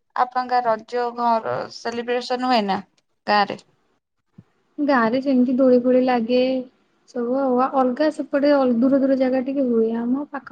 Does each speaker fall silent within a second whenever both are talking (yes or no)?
yes